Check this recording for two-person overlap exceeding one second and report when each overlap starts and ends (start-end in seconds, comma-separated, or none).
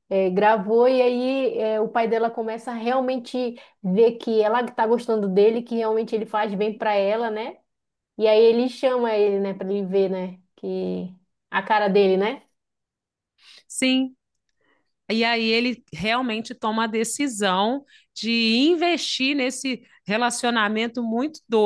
none